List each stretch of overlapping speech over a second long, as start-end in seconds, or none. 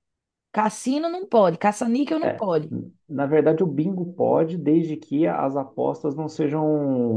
none